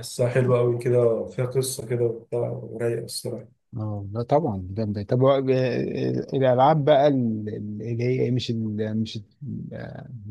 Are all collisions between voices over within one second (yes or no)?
yes